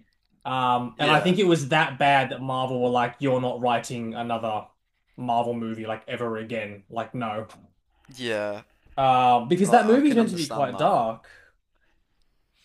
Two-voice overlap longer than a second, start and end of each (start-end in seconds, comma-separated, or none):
9.6-10.9